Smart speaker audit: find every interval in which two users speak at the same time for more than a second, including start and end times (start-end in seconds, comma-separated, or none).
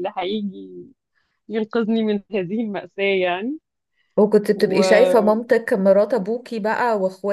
none